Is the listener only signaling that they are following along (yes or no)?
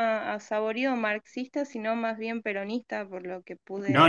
no